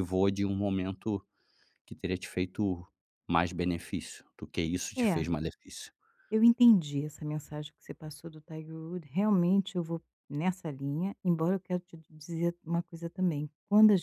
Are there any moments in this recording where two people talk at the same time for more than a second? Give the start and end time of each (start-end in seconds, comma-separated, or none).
none